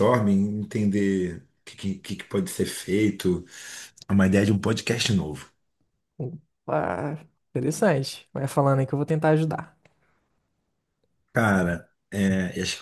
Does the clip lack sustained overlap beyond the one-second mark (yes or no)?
yes